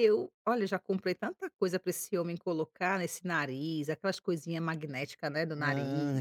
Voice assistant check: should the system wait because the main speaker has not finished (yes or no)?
no